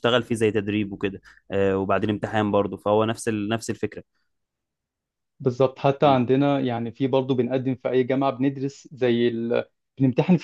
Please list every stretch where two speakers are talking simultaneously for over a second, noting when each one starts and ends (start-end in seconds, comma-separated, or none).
none